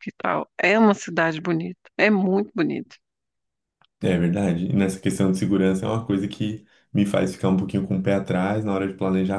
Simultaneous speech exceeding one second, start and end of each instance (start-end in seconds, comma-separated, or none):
none